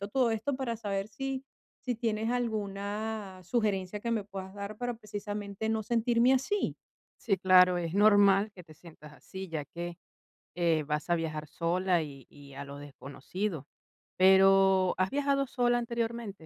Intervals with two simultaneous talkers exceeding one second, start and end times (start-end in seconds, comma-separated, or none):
none